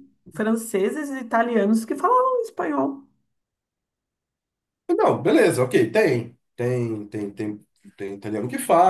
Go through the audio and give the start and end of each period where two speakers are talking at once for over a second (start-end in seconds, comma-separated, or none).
none